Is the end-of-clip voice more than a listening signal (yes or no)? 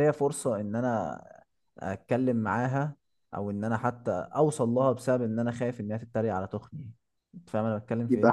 yes